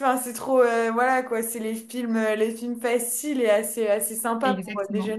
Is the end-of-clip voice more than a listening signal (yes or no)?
yes